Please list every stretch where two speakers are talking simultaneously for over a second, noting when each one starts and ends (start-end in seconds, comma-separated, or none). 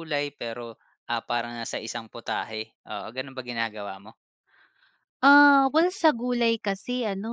none